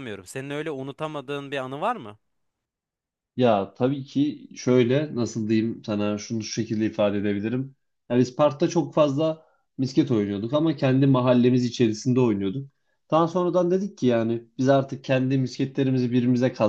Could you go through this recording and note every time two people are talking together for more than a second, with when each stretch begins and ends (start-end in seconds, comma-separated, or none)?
none